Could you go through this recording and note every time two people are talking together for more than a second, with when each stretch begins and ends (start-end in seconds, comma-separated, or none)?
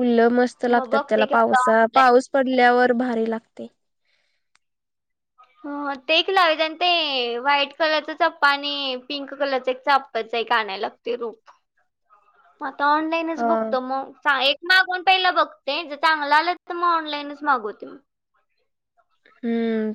0.8-2.1